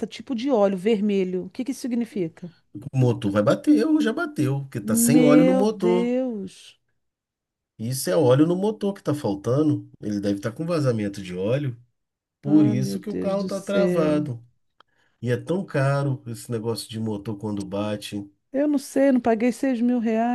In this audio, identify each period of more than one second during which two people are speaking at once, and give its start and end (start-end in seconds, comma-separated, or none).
4.8-6.1, 12.4-14.3